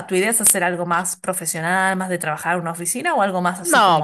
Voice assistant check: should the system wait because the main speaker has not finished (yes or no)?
no